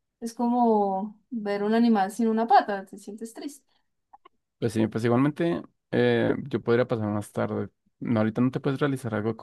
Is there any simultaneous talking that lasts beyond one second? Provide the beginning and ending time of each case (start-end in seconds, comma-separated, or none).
none